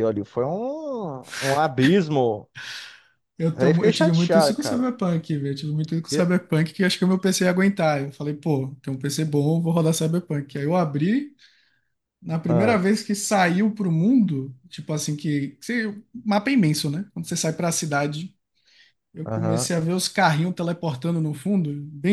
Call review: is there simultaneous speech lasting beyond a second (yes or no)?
yes